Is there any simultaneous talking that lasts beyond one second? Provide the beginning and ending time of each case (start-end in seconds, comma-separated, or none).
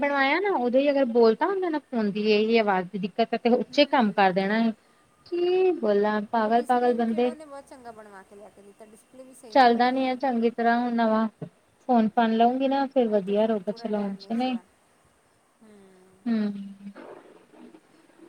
13.1-14.5